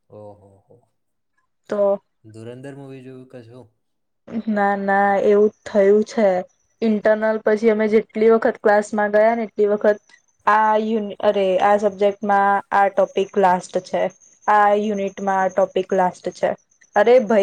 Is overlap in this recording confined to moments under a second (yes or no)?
yes